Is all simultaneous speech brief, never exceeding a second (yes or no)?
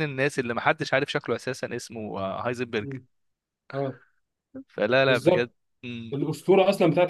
yes